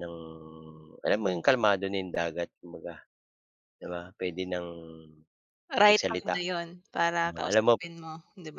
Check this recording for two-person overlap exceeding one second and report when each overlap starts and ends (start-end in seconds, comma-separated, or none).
none